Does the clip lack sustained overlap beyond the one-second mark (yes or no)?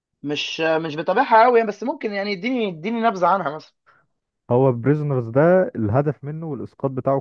yes